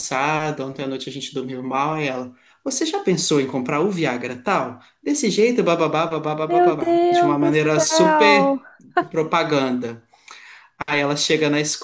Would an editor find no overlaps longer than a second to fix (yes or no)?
no